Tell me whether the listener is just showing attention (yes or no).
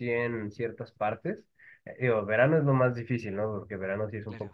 yes